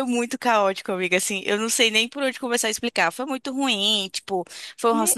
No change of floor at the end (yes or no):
yes